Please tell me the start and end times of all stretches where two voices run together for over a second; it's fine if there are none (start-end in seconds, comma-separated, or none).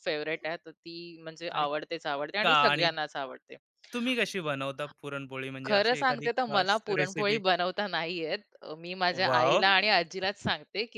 5.7-7.4